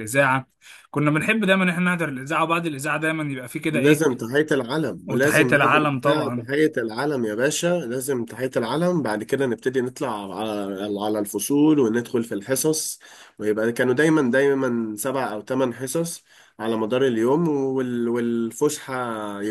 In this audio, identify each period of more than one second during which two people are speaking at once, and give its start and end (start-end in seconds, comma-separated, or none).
5.1-6.5